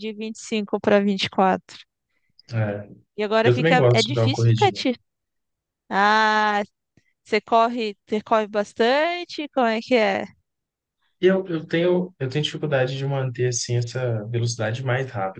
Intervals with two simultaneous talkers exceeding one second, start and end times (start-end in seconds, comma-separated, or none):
3.4-4.8